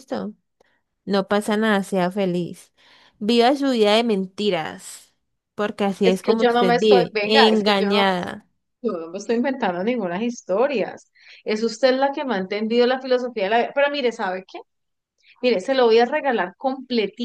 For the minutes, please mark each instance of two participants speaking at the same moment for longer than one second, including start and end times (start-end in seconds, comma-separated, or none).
6.0-8.1